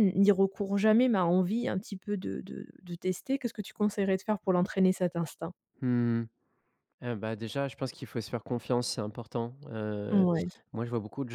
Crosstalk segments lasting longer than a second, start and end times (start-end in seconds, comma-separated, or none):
none